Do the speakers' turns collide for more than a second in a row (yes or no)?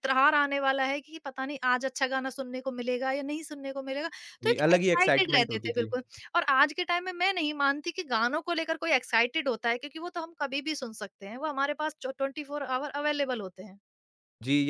yes